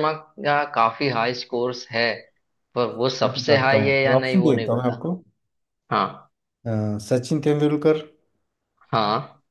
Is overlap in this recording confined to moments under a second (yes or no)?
no